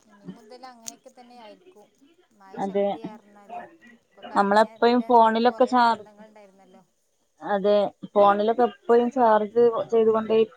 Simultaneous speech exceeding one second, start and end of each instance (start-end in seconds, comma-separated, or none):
4.4-6.0